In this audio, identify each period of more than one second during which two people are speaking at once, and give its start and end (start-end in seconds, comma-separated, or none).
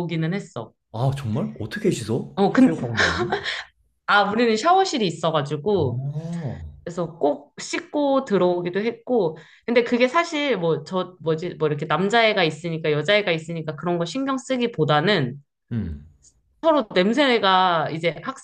none